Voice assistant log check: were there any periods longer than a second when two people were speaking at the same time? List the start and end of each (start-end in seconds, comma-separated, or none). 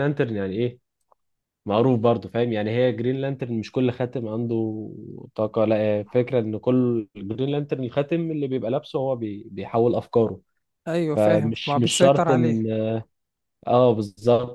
11.2-12.6